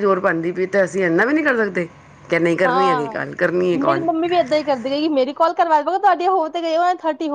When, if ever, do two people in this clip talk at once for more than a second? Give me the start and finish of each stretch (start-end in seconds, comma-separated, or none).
none